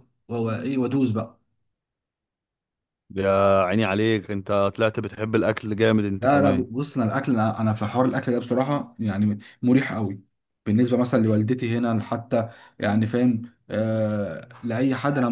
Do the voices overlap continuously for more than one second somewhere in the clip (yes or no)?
no